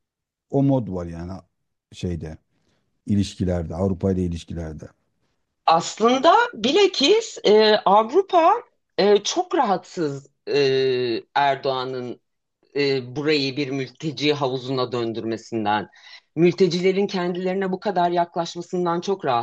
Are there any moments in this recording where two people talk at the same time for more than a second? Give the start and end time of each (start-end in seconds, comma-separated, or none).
none